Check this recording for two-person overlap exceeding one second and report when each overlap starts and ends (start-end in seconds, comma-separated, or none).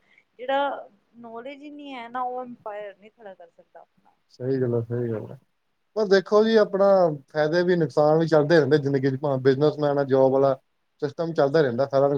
none